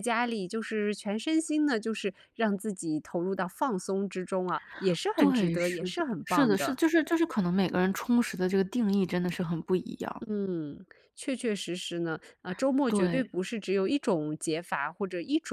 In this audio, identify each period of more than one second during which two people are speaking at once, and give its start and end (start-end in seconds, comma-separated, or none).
5.1-6.8